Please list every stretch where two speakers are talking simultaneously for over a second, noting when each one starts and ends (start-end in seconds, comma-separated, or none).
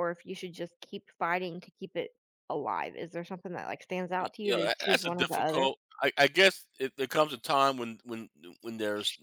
4.4-5.7